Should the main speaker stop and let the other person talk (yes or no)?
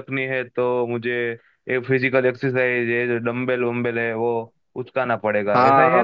yes